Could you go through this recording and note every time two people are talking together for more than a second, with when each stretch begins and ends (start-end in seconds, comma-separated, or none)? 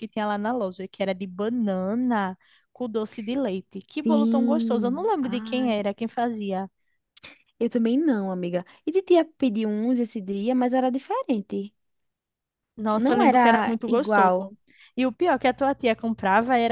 4.0-5.9, 13.0-14.4